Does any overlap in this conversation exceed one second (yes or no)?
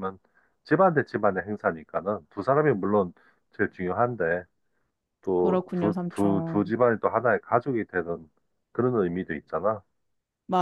yes